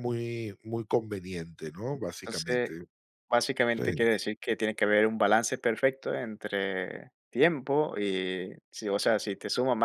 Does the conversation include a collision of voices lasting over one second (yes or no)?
no